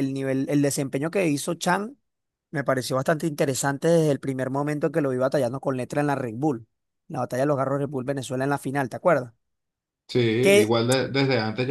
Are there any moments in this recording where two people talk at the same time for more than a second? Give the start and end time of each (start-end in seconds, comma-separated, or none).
none